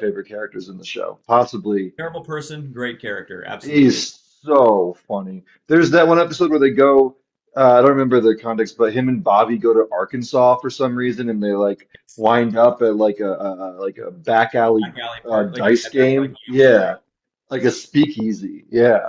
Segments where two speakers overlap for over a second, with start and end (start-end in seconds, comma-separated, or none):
14.6-16.9